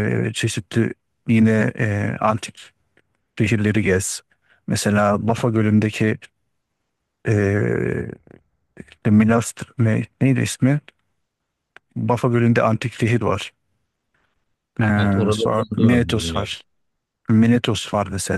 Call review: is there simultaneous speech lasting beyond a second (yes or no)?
yes